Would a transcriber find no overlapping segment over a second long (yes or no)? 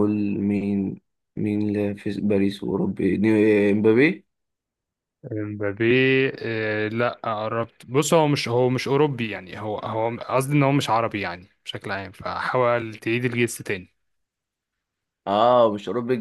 yes